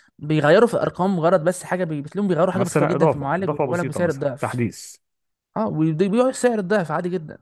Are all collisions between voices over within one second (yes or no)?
no